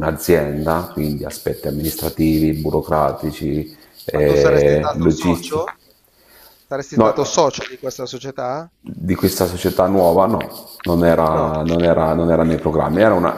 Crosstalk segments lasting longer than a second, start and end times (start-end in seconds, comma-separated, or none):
4.1-5.6